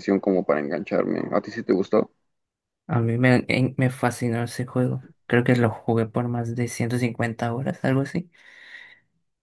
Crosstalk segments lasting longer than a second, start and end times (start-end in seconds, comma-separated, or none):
none